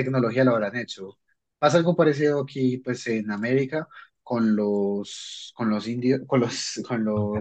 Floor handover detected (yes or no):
no